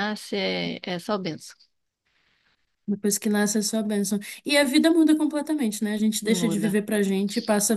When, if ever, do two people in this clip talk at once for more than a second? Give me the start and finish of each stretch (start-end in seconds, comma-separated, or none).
none